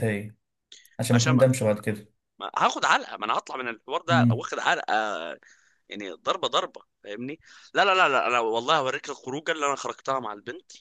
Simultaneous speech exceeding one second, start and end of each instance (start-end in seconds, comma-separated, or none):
none